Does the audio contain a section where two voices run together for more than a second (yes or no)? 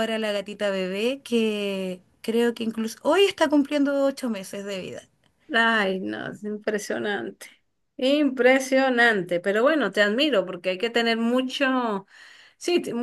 no